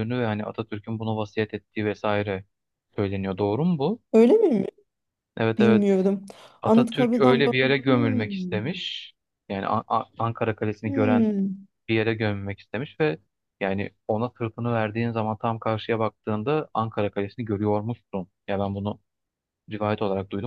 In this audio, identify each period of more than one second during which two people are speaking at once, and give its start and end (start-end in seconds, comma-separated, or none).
6.6-8.6